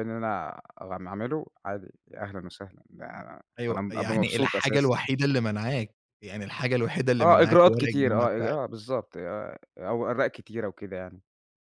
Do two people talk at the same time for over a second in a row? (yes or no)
yes